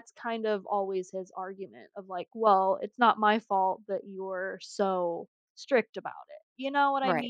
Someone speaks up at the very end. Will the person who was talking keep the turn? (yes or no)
no